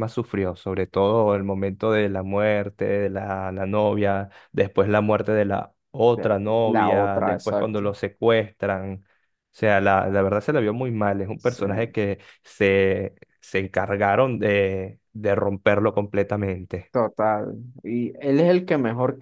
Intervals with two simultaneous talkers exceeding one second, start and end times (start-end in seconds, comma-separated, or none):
6.1-7.8